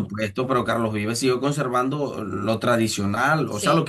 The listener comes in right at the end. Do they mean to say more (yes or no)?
no